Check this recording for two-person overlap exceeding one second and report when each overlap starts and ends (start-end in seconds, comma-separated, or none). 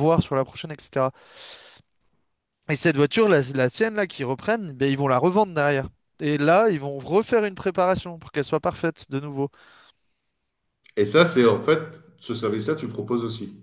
none